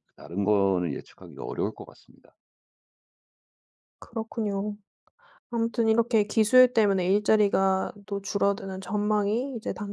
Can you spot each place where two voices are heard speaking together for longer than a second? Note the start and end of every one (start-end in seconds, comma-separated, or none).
none